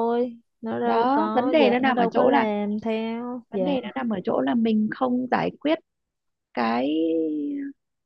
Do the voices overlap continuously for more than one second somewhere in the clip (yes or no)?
yes